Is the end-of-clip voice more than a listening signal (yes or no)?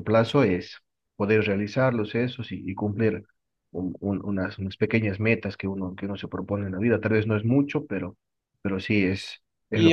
yes